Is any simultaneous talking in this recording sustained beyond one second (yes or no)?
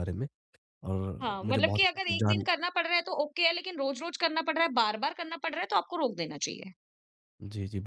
yes